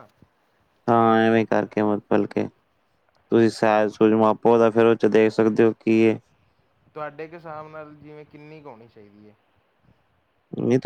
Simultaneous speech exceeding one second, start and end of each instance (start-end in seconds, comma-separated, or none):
none